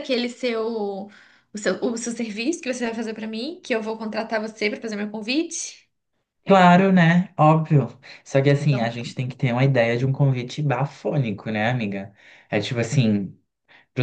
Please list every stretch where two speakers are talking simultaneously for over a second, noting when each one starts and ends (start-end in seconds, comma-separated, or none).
none